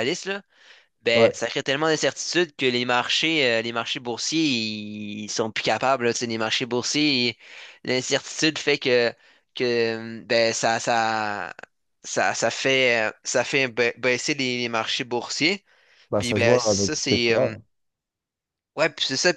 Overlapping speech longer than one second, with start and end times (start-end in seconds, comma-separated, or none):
16.2-17.6